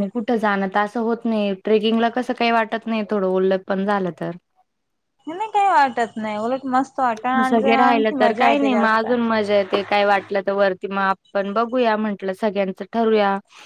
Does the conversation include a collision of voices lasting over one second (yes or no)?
yes